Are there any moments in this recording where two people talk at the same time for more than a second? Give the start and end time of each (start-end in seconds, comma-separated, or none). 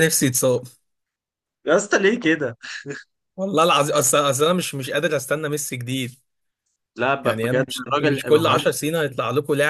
7.2-8.7